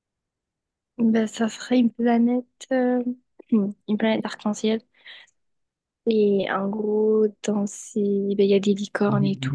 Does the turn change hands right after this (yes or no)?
yes